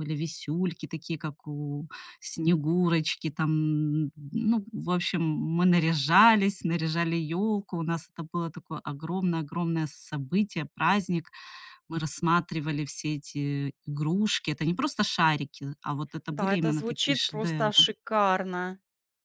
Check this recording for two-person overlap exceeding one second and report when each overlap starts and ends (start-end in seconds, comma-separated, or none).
16.3-17.9